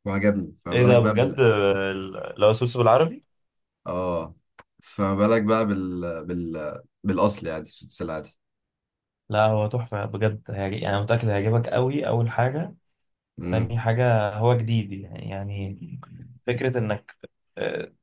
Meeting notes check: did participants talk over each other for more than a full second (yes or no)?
no